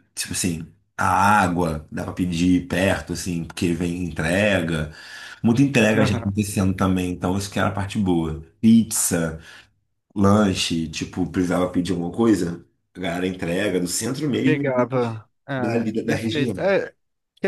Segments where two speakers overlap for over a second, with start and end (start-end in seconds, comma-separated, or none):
14.4-16.7